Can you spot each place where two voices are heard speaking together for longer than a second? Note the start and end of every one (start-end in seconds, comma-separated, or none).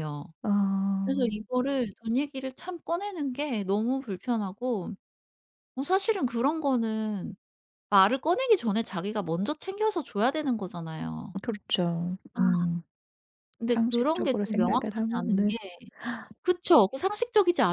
13.7-15.6